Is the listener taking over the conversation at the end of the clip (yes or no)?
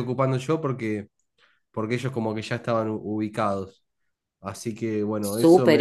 yes